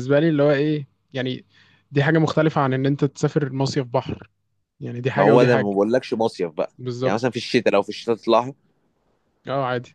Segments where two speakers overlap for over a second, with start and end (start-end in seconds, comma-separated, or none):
none